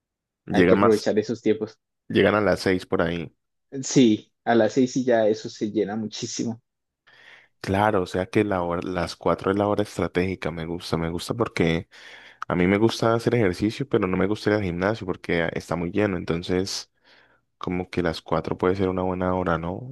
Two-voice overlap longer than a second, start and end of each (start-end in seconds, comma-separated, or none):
none